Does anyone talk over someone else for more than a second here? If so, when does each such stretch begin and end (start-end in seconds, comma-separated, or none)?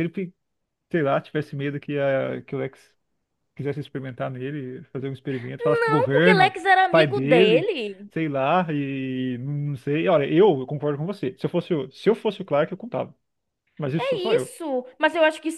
5.8-7.7